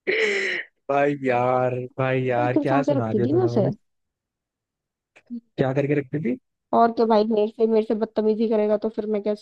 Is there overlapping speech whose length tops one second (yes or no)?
yes